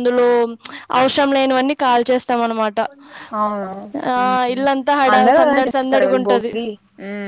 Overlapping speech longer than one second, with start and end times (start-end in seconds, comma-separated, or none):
5.1-6.5